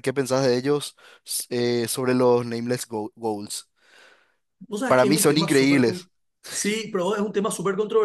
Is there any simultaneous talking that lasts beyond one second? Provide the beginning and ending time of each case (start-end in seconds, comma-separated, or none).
4.9-6.1